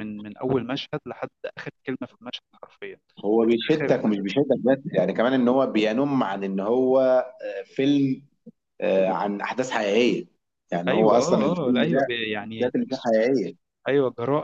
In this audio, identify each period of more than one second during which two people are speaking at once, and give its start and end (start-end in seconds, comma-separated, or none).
10.9-13.1